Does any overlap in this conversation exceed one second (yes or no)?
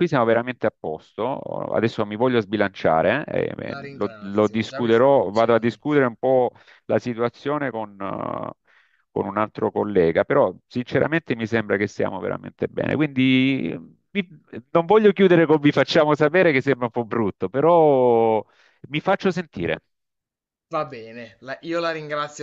yes